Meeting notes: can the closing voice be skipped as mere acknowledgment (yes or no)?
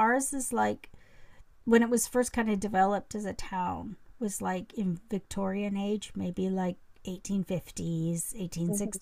yes